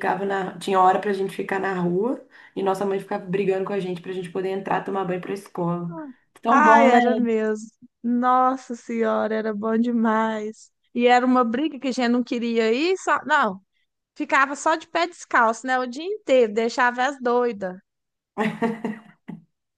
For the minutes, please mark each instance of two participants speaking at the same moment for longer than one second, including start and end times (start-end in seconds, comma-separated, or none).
none